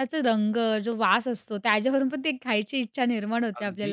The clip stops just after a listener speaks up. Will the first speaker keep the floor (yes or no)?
no